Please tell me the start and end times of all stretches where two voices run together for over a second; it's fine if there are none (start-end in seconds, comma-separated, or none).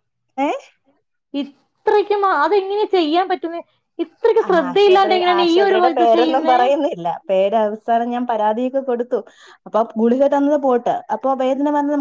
4.5-6.6